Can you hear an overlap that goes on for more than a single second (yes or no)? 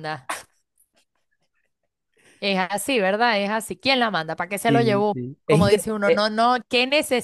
yes